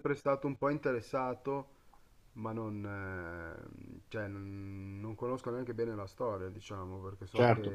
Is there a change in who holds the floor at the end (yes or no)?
yes